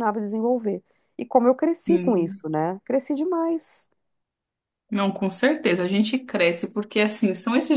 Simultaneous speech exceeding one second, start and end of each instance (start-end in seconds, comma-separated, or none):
none